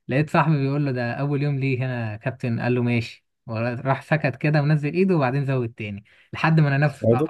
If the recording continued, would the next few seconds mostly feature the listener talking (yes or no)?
no